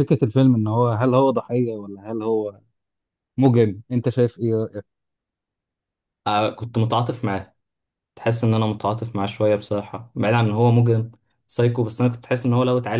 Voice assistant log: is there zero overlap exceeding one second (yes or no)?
yes